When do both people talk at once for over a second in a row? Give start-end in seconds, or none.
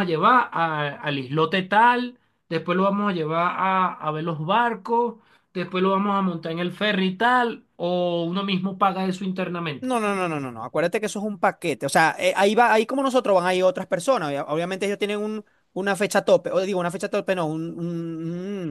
none